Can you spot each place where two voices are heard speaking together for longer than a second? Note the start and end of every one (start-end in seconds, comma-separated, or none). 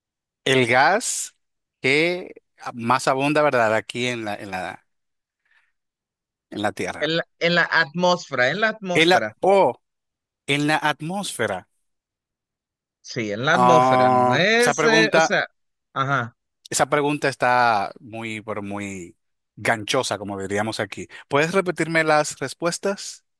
13.5-15.3